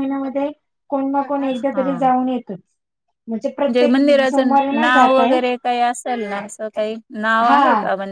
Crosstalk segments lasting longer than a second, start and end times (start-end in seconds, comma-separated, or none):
3.6-5.4